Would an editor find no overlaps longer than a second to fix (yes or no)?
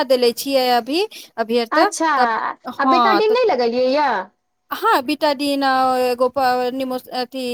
yes